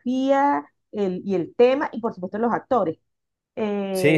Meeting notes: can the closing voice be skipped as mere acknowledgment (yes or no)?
no